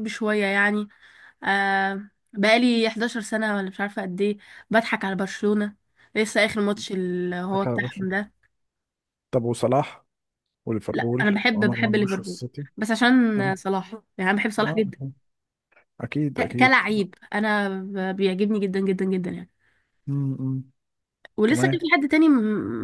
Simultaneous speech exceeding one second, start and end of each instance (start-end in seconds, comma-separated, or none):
10.9-12.7